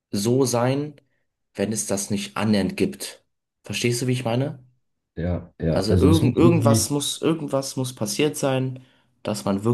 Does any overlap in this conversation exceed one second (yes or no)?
yes